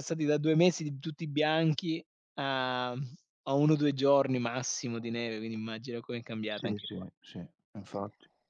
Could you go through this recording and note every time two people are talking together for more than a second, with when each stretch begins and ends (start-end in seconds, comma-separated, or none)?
none